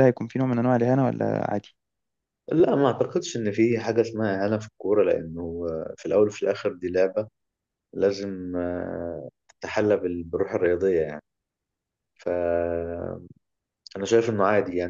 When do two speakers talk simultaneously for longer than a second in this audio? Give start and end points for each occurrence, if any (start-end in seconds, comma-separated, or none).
none